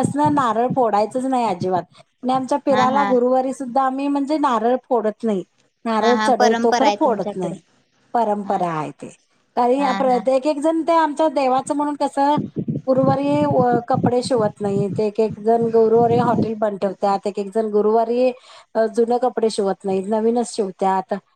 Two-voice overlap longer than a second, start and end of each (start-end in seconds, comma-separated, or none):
6.0-7.5